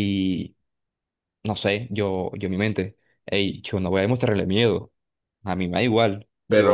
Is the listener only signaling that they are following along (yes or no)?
no